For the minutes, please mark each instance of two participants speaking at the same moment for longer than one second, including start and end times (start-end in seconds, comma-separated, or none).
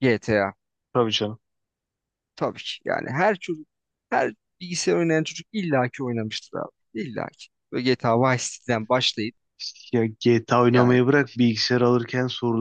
none